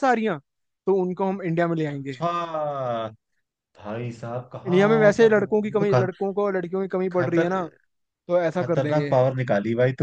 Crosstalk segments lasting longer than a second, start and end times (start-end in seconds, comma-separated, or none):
4.7-6.1